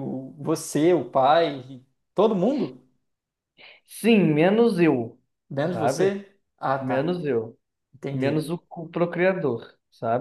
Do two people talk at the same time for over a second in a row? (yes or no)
no